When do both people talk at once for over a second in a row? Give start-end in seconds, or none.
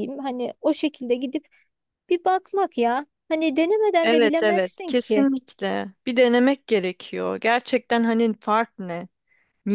4.0-5.3